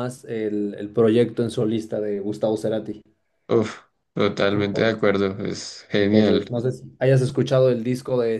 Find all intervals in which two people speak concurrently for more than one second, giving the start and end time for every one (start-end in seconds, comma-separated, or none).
none